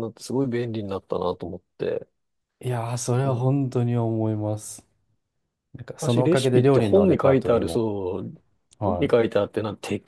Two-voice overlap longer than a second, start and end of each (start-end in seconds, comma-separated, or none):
6.0-7.8